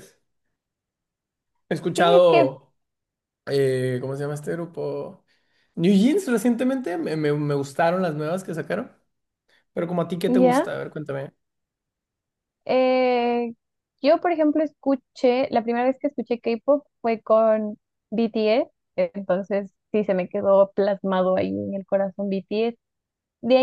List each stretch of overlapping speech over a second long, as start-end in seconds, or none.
none